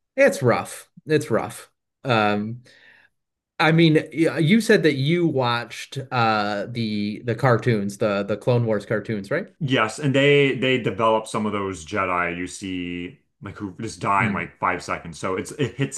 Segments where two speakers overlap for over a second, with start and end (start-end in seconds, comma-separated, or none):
none